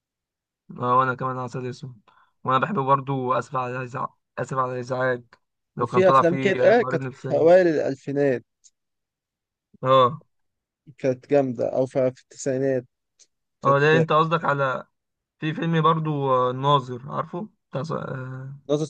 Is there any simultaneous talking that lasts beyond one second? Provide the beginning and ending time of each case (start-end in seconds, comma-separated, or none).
5.8-7.5